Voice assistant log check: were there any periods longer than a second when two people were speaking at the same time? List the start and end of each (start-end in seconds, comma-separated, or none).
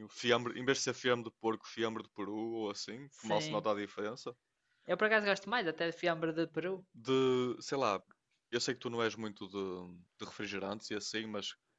none